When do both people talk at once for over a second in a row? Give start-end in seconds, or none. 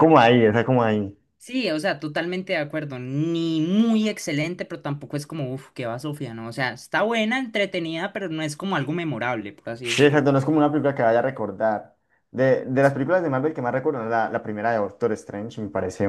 none